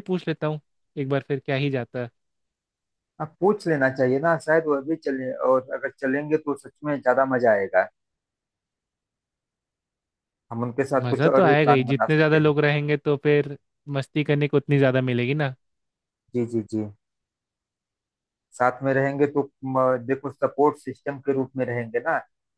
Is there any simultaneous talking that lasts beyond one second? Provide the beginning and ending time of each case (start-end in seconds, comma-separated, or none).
11.1-12.5